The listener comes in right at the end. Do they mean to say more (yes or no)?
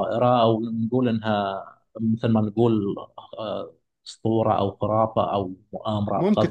yes